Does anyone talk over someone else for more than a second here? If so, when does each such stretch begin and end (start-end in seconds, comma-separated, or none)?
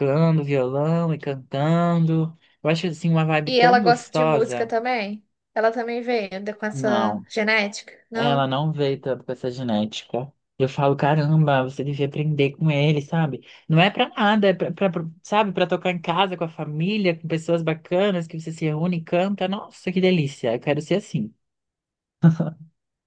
3.5-4.7